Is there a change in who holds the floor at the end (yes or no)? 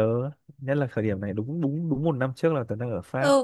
yes